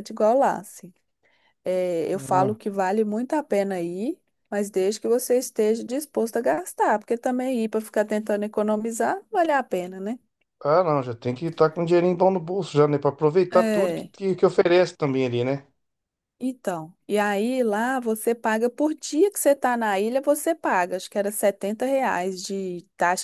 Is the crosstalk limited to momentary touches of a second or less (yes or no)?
yes